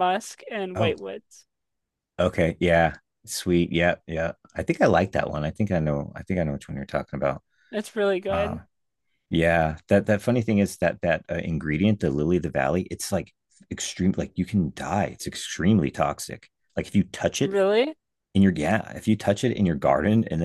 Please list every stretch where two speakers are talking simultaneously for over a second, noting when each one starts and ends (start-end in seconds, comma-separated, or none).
none